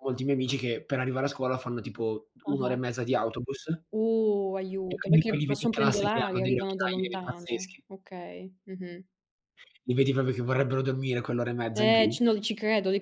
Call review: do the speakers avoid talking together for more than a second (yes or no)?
no